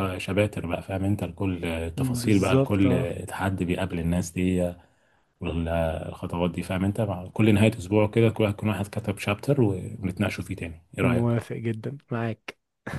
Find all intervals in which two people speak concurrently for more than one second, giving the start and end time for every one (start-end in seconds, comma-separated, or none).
2.0-3.2